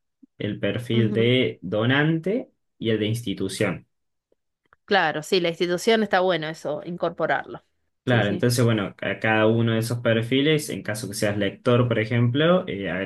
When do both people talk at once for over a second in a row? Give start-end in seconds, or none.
none